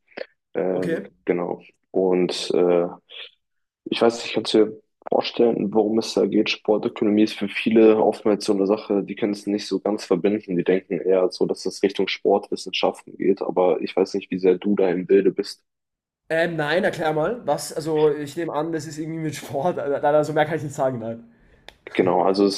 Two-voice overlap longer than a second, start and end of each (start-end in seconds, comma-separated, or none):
none